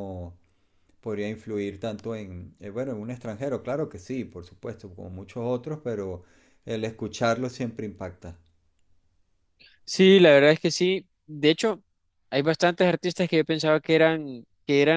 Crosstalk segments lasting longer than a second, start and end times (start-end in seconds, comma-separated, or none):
none